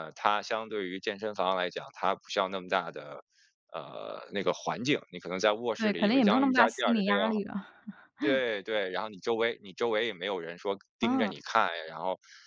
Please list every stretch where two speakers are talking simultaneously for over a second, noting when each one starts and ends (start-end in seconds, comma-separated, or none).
5.8-7.2